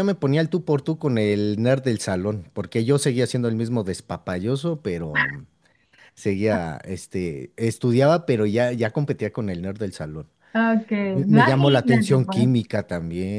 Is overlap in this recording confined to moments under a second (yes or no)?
no